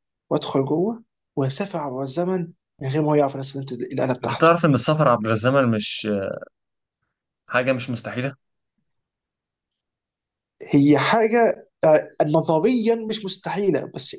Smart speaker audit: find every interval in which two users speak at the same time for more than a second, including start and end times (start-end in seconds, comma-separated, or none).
none